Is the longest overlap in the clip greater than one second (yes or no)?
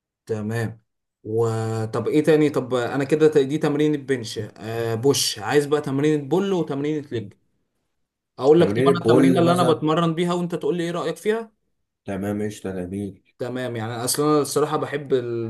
yes